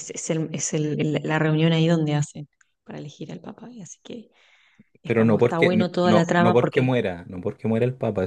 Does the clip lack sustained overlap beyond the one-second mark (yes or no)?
no